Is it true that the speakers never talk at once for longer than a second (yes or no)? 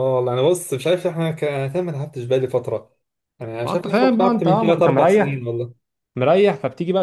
no